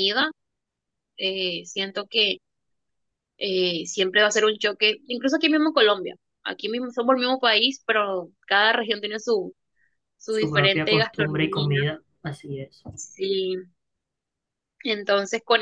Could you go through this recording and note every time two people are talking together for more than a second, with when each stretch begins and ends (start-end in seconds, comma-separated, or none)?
10.3-11.7